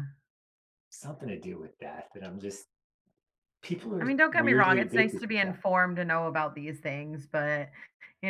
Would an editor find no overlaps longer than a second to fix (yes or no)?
no